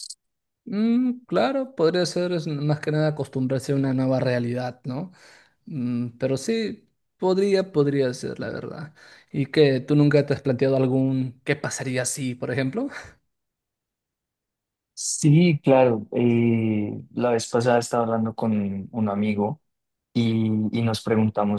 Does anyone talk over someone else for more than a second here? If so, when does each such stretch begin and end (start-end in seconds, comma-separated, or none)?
none